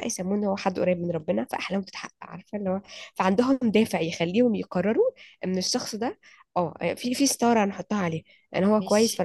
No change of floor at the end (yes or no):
yes